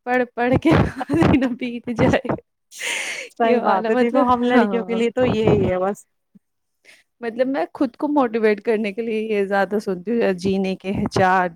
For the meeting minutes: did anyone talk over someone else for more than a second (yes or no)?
yes